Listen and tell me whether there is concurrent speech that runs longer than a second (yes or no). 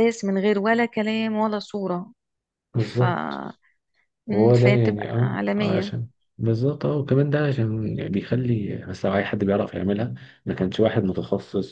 yes